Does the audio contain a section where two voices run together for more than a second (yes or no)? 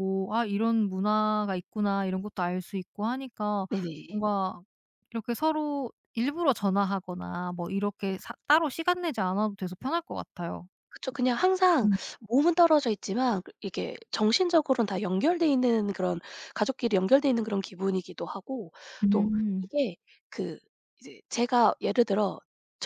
no